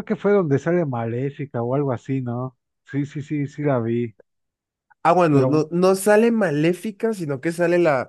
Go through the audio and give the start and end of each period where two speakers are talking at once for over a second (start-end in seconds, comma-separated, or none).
none